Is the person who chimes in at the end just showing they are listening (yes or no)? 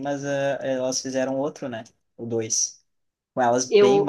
yes